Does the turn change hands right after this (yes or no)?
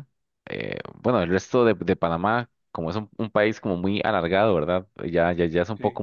no